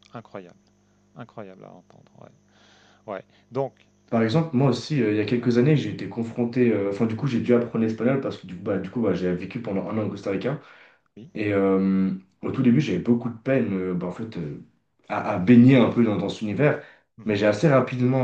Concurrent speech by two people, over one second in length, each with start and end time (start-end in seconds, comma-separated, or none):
none